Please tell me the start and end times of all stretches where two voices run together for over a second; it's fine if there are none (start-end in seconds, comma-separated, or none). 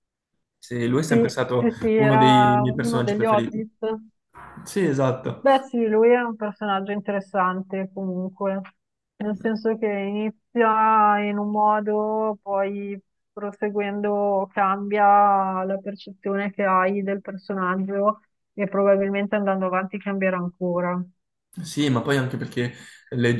1.1-3.6